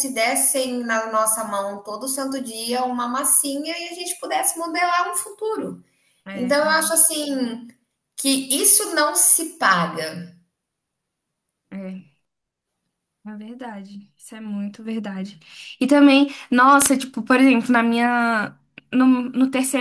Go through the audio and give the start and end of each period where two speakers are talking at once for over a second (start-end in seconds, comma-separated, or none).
none